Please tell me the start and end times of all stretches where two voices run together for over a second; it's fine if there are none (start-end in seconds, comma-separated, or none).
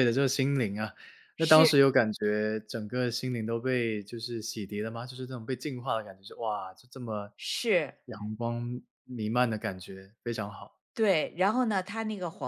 none